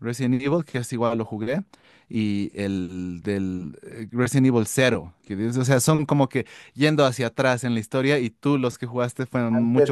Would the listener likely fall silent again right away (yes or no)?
no